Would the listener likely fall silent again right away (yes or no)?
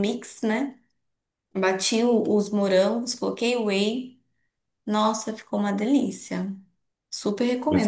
no